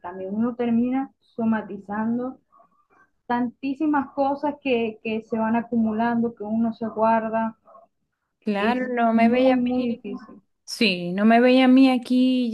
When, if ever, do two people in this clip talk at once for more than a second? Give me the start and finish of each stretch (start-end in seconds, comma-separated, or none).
8.6-10.0